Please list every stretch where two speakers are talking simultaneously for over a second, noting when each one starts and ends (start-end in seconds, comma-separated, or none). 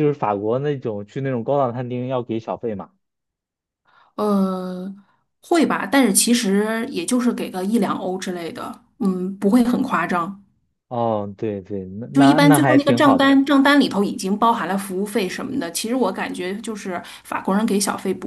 12.1-13.3